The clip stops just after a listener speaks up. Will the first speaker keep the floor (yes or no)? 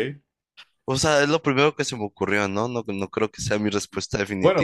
no